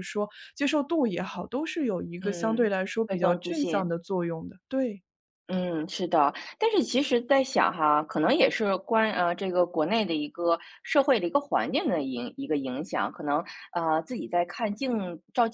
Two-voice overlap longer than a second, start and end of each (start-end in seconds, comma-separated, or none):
2.2-3.9